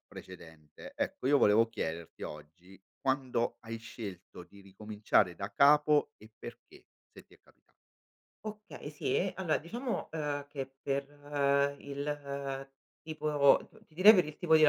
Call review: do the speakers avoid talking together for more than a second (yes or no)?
yes